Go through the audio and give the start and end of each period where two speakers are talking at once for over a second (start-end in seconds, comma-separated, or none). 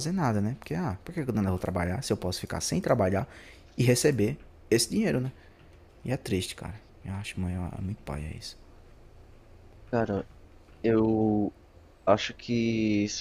none